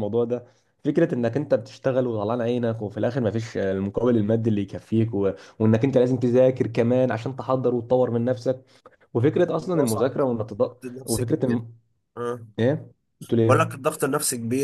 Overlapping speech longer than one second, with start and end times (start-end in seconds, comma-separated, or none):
9.6-11.6